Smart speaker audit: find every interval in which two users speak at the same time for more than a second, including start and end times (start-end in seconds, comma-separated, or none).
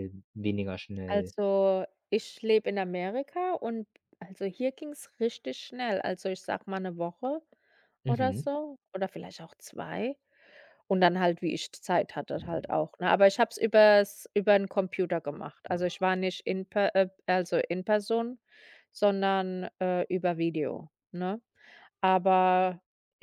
none